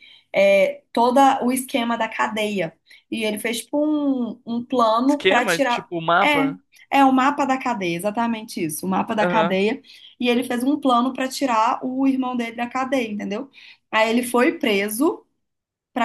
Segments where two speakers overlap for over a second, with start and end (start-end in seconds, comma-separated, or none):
5.1-6.5